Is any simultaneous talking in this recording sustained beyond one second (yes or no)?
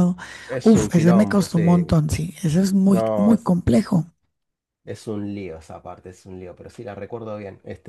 yes